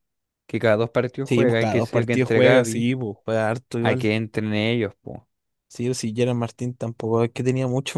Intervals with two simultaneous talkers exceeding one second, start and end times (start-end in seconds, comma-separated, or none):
1.2-2.9